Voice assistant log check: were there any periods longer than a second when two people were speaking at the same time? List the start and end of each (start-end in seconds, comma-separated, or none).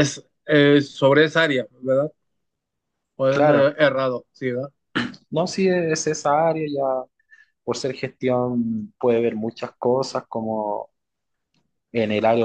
none